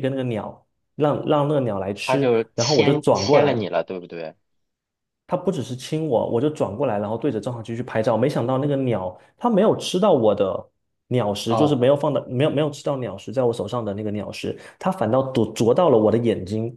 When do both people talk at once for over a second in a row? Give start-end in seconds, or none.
2.0-3.6